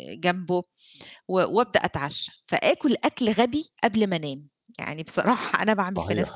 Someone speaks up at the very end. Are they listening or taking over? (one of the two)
taking over